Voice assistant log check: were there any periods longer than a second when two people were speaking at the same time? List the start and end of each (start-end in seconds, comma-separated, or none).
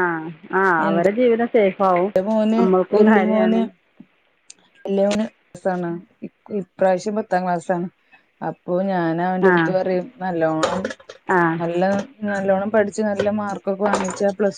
none